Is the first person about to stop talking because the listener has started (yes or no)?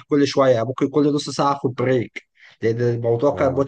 no